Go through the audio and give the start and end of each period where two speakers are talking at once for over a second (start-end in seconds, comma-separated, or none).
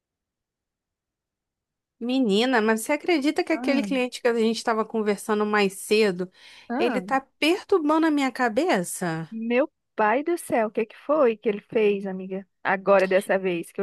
none